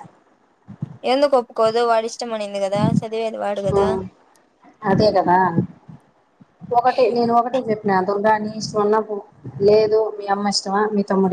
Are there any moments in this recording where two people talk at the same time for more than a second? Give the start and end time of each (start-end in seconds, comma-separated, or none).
none